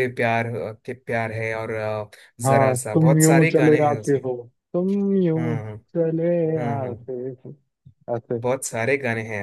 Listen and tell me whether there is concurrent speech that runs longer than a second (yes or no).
yes